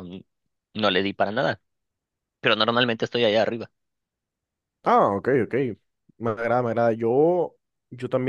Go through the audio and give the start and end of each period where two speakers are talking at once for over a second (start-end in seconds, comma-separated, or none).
none